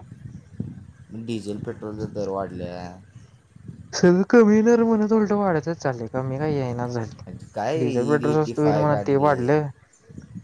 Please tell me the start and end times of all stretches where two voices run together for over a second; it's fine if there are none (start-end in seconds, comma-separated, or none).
7.8-9.3